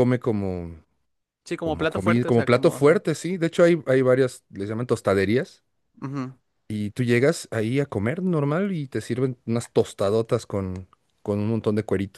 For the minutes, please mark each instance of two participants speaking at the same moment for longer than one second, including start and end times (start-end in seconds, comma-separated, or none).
1.6-3.0